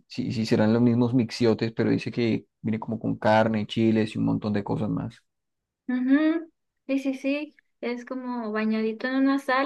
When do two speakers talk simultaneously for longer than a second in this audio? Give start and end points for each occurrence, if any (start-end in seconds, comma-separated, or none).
none